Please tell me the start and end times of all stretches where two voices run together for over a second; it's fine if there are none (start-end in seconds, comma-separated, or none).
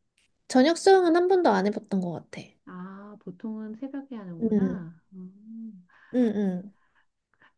none